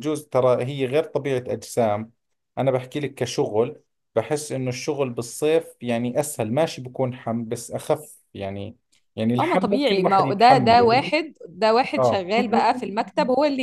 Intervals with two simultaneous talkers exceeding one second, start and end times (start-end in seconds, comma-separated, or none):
9.4-11.1